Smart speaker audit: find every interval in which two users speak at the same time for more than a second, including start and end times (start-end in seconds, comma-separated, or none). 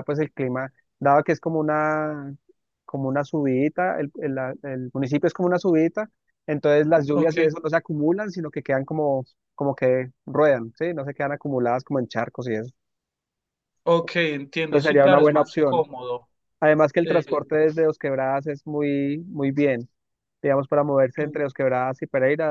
14.6-15.9